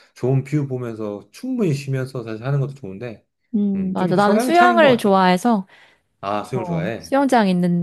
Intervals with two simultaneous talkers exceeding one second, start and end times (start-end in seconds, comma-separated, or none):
3.7-5.1